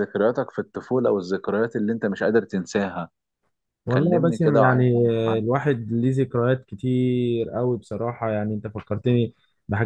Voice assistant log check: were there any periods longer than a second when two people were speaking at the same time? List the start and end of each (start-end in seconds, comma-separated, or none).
3.9-5.4